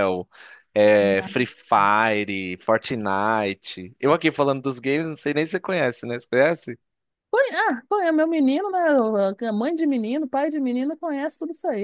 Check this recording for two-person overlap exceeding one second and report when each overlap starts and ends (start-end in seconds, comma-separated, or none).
none